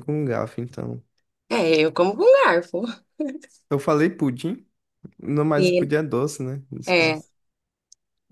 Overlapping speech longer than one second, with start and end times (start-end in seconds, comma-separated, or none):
none